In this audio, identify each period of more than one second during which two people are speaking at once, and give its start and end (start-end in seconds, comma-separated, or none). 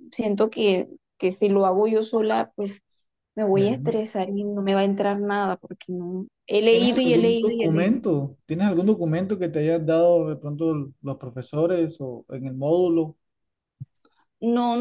6.7-8.0